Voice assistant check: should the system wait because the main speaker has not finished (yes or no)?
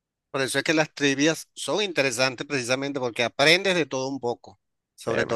yes